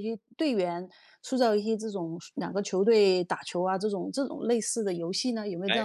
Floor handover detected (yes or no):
yes